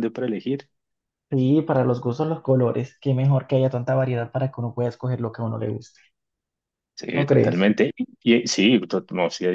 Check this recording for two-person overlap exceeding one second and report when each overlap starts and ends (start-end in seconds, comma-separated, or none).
none